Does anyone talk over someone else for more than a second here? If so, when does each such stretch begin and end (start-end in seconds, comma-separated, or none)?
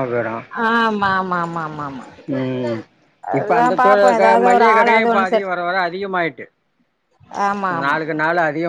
3.4-5.5